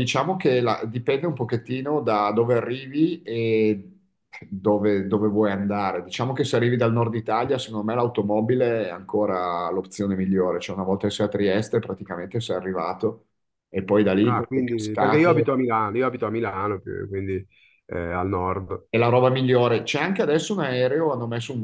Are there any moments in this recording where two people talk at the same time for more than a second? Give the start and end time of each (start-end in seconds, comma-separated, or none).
14.2-15.5